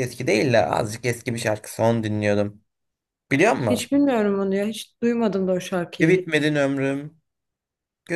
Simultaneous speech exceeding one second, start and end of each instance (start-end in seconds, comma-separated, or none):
none